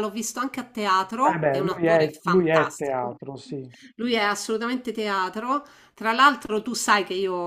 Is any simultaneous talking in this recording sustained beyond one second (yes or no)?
yes